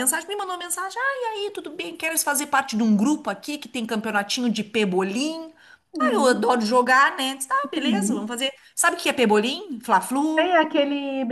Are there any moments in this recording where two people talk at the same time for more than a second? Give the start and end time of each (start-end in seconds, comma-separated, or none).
none